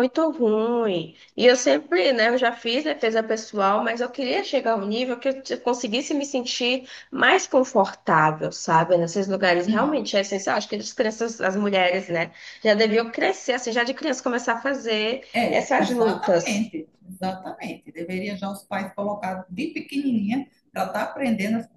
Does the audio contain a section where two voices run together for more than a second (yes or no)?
yes